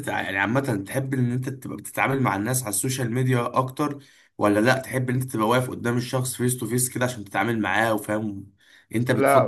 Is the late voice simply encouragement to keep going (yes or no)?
no